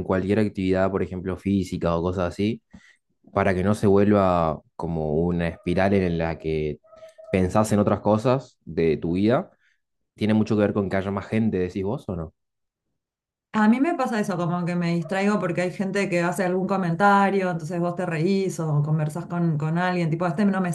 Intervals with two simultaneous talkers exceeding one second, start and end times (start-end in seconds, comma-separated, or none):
none